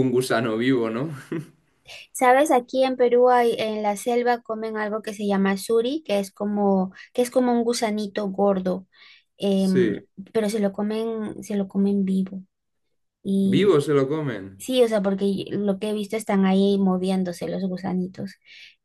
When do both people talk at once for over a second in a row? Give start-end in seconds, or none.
none